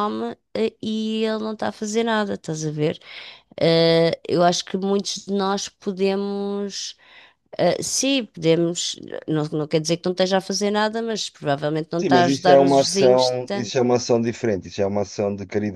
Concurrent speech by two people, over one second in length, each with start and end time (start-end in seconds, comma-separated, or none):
12.0-13.7